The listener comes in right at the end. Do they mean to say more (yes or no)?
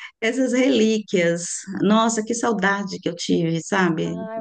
yes